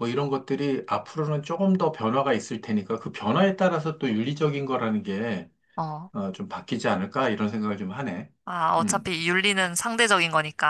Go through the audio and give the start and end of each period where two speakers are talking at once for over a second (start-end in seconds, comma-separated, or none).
none